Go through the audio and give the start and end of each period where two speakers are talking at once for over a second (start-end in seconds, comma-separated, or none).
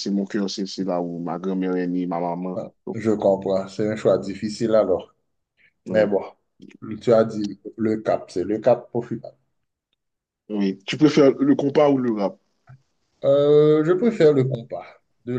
none